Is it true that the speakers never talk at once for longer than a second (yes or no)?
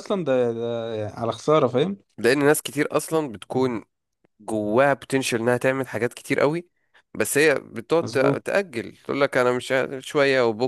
yes